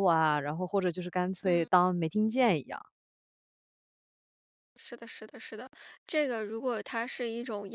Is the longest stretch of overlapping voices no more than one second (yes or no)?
yes